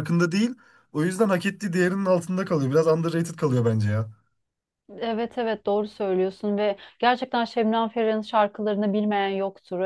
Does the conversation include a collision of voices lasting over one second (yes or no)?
no